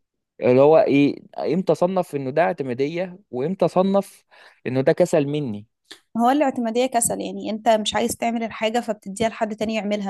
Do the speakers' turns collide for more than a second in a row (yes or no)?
no